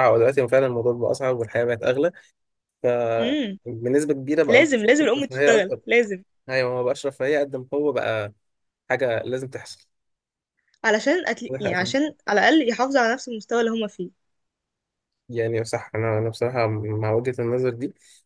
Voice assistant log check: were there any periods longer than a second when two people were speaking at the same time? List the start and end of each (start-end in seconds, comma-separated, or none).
4.5-5.8